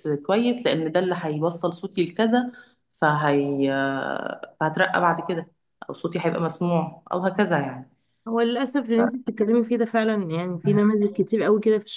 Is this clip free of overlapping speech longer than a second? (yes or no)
yes